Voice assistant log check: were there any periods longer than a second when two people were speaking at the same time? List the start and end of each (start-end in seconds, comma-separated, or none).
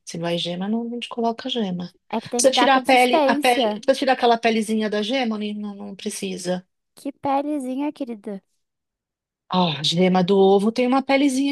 2.4-3.8